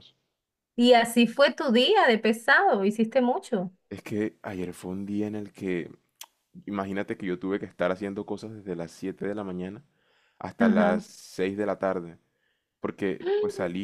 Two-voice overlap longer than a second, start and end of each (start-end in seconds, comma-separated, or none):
none